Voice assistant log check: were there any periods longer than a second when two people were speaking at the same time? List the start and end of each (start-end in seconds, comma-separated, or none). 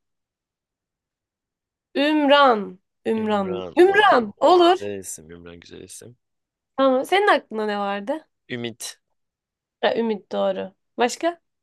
3.1-4.8